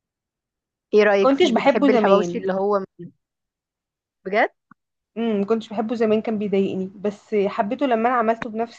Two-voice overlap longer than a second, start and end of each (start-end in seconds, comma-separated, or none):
1.2-2.5